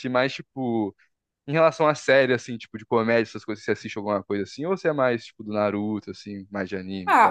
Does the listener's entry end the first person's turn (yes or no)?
yes